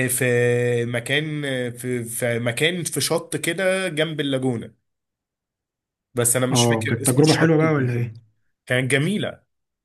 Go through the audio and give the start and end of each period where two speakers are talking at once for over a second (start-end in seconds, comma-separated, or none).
6.5-8.2